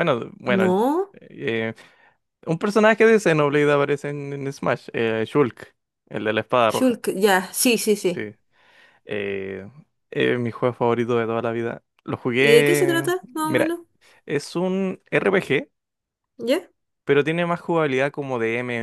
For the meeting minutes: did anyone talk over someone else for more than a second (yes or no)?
yes